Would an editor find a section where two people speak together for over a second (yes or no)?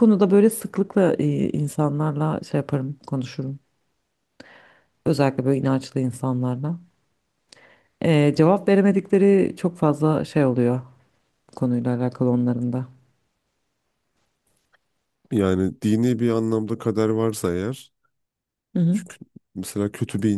no